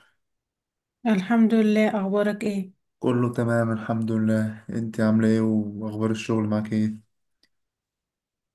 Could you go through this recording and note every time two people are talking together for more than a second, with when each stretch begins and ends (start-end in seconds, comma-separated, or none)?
none